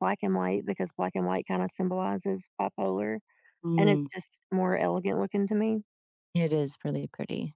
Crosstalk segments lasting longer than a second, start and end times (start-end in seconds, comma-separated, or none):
none